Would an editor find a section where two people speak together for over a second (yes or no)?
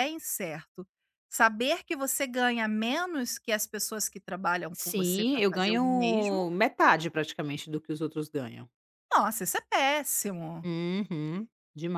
yes